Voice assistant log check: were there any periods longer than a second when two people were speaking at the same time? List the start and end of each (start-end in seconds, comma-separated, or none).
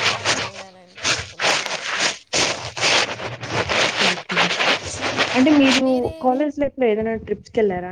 none